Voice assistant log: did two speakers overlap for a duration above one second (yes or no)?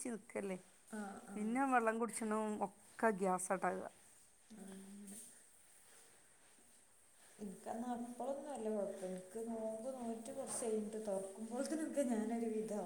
no